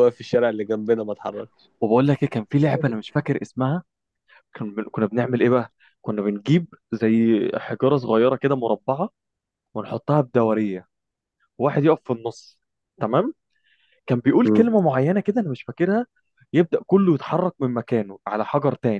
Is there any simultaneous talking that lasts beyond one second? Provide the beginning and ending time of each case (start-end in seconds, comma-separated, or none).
none